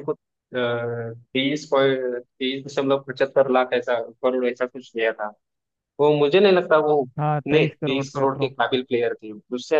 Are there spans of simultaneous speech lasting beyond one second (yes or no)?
yes